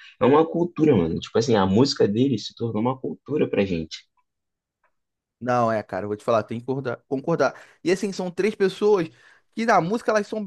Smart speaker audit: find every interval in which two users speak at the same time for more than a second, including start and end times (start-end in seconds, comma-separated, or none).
none